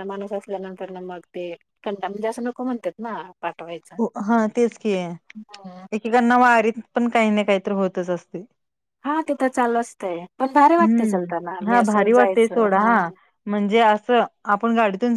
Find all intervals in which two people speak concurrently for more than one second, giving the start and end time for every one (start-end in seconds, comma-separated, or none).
10.8-12.8